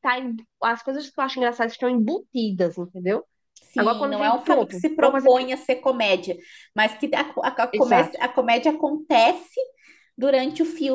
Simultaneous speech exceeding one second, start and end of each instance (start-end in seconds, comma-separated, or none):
3.8-5.5